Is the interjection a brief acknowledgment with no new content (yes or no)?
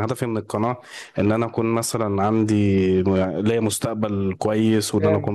yes